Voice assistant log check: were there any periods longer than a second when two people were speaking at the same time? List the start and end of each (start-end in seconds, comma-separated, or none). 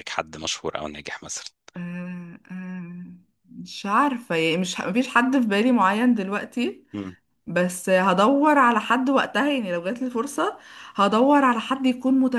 none